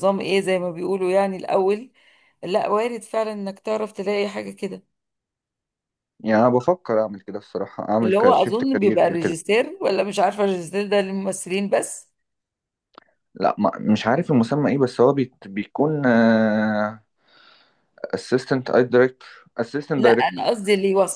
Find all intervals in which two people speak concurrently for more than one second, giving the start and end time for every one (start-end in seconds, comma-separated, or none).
8.0-9.3